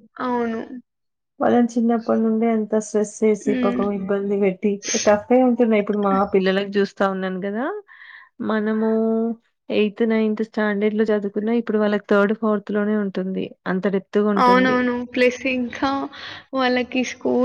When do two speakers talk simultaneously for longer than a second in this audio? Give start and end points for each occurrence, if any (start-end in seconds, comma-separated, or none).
none